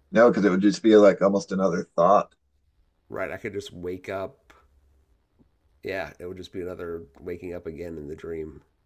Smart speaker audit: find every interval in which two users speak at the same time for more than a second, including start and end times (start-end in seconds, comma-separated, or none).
none